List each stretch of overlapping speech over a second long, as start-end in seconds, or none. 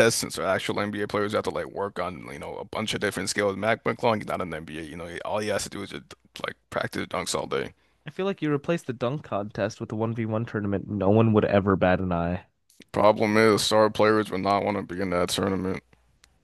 none